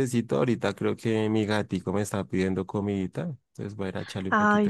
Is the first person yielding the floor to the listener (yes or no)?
yes